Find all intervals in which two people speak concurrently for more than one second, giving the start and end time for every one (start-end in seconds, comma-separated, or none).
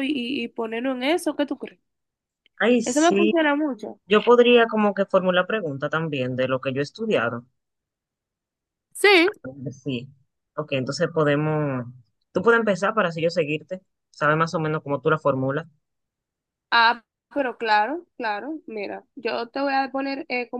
none